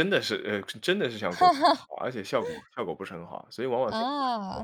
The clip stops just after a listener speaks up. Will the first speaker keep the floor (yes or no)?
no